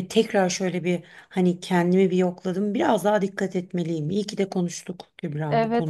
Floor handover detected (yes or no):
yes